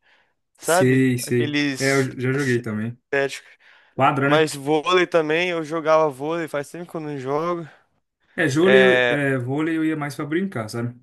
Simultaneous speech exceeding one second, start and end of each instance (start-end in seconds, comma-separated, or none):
0.6-3.0